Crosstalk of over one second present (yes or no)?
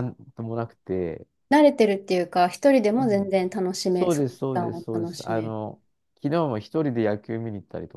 yes